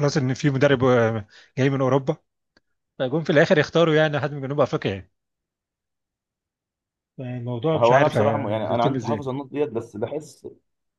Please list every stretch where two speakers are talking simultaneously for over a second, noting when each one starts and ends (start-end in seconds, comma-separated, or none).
7.7-9.3